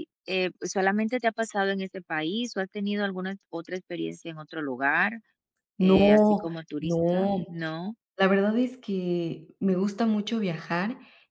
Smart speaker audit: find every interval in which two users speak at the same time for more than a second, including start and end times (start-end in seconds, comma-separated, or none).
5.8-7.4